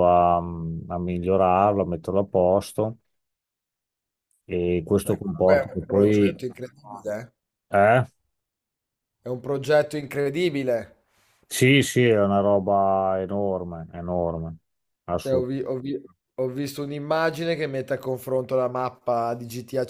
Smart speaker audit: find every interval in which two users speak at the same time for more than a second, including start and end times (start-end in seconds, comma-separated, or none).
5.0-6.4